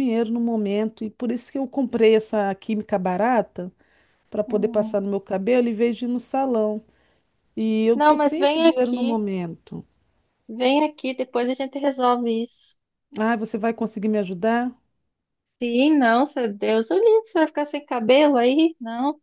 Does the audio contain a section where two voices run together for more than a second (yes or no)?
yes